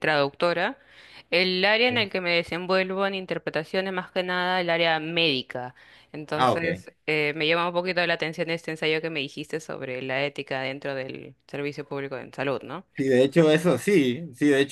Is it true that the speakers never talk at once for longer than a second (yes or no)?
yes